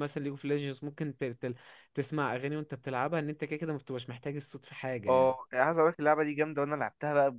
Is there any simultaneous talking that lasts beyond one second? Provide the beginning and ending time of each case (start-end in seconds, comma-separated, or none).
none